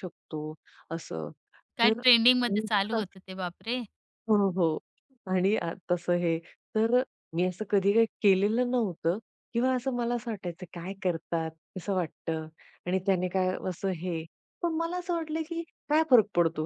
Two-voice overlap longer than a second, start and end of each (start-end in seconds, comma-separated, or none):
1.8-3.3